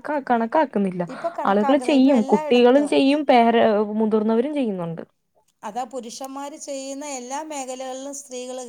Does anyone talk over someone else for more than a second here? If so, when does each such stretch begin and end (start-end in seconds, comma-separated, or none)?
1.5-2.9